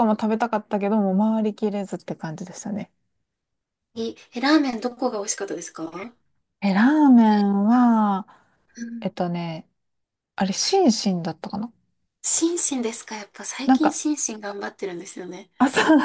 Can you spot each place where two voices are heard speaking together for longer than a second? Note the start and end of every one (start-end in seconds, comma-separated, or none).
none